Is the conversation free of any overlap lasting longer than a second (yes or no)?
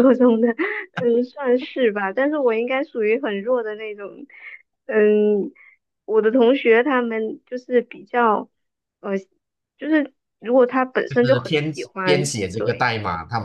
no